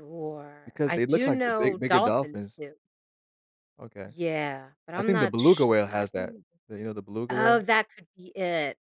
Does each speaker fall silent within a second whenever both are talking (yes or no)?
no